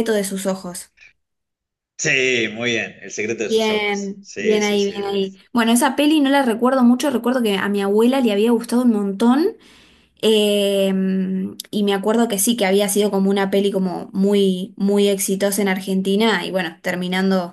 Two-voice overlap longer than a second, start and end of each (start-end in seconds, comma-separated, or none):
3.5-4.9